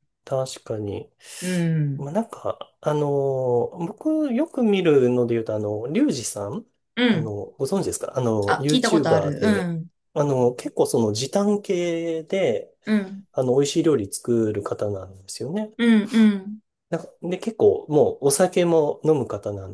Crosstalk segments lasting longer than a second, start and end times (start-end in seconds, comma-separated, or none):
8.5-9.7